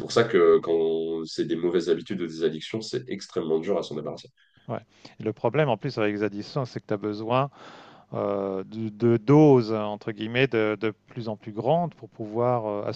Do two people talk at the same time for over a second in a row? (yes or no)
no